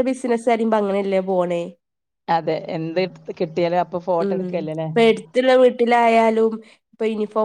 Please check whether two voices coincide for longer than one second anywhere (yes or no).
no